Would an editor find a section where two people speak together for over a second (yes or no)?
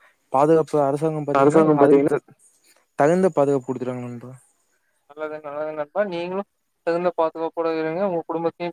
no